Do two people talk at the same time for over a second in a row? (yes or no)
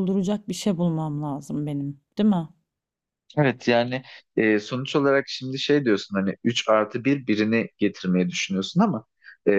no